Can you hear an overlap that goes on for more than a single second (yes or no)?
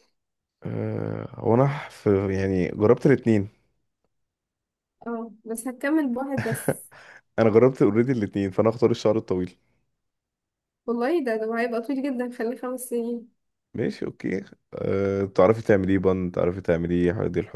no